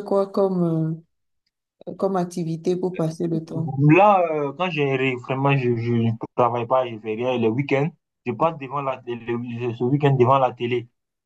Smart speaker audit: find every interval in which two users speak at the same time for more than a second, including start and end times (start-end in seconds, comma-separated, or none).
none